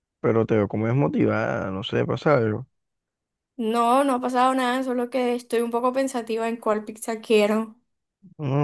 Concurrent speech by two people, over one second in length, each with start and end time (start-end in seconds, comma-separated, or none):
none